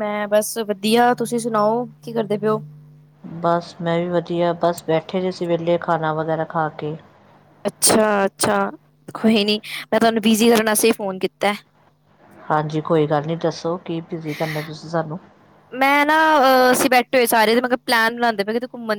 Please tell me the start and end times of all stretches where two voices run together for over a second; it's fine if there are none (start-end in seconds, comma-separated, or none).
none